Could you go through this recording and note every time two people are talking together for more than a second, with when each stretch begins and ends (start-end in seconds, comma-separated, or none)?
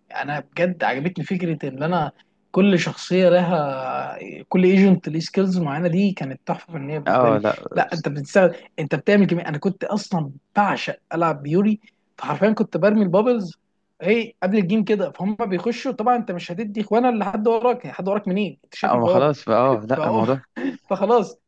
none